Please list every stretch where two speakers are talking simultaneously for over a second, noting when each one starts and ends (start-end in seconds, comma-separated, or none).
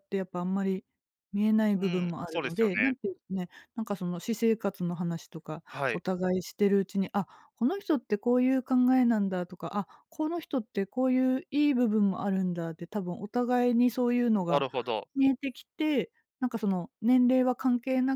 1.8-3.0